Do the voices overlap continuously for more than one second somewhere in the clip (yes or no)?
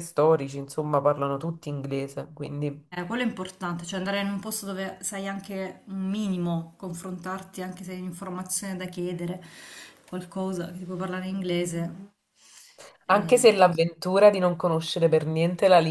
no